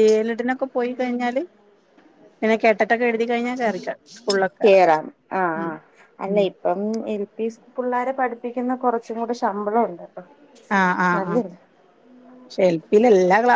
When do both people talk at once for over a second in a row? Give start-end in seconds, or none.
none